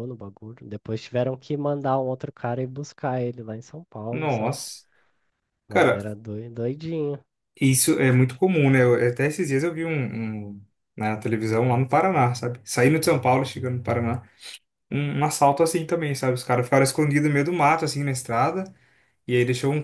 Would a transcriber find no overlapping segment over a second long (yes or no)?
yes